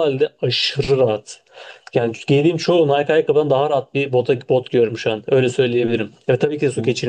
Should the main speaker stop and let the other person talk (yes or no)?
no